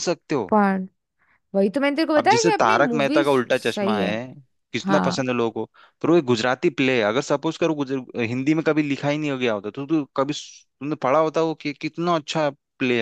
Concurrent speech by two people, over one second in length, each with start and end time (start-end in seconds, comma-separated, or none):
2.2-4.2